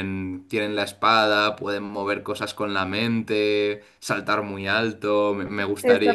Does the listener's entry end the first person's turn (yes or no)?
yes